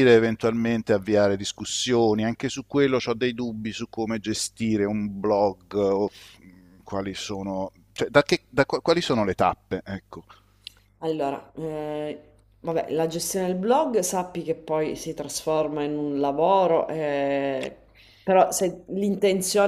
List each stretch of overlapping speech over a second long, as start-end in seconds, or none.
none